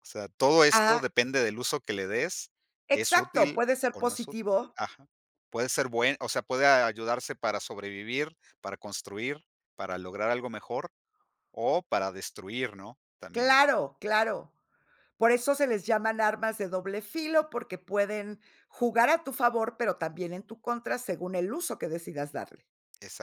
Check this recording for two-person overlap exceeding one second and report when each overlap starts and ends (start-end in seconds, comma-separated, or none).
2.9-4.8